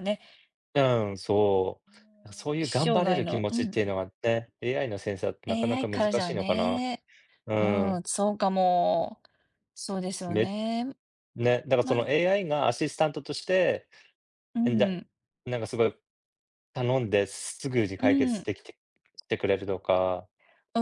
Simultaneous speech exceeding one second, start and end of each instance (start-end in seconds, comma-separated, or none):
2.6-3.8, 5.5-6.8